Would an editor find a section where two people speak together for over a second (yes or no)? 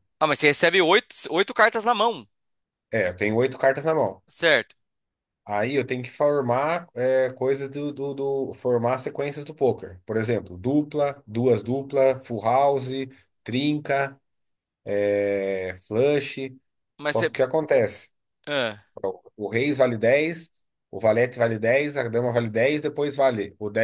no